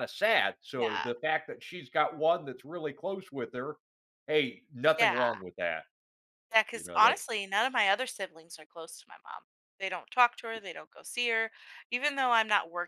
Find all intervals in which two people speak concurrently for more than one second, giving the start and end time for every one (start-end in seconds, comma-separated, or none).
none